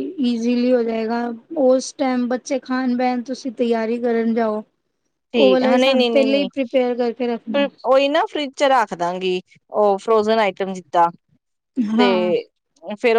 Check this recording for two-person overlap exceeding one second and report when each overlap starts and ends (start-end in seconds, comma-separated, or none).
5.3-7.7